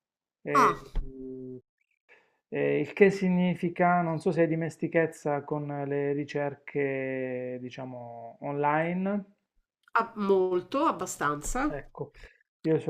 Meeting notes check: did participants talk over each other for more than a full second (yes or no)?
no